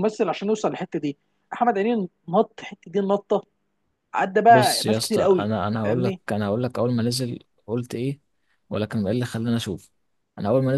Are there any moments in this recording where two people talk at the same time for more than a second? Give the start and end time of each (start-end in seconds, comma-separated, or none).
4.5-6.2